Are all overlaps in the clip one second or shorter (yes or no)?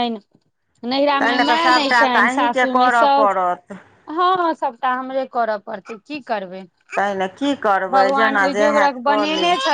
no